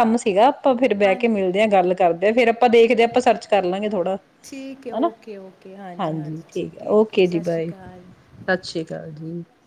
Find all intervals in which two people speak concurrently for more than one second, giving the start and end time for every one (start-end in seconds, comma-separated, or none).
none